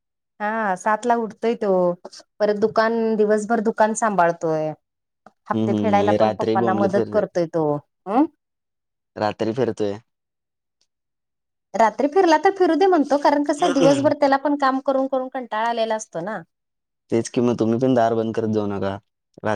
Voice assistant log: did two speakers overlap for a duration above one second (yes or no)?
yes